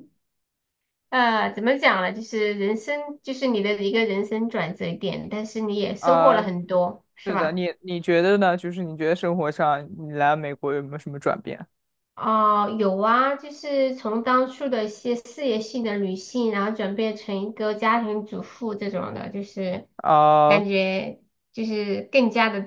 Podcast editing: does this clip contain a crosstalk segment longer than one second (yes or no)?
no